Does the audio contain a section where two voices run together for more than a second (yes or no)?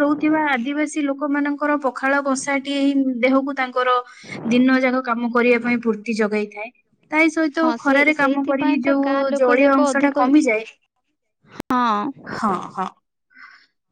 yes